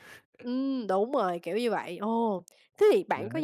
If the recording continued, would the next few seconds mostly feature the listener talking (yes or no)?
no